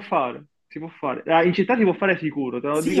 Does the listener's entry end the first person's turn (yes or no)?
yes